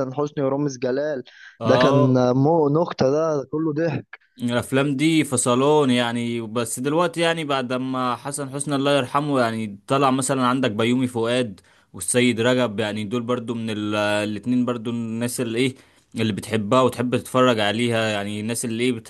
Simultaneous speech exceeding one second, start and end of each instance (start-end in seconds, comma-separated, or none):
none